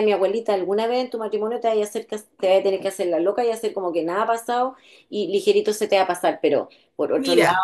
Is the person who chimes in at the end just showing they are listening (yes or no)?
yes